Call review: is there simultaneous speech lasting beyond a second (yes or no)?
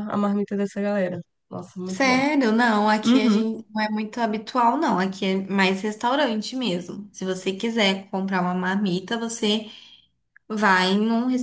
no